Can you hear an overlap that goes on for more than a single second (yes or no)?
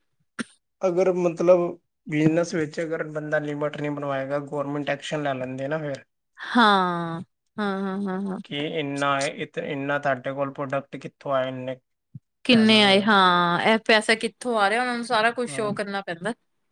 no